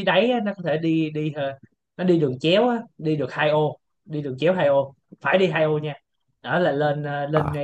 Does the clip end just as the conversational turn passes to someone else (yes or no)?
no